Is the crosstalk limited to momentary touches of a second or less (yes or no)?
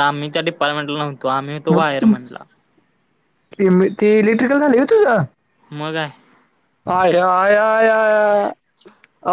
yes